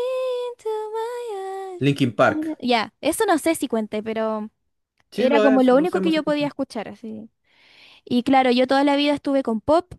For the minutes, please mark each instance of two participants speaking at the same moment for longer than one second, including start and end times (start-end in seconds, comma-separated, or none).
5.1-6.5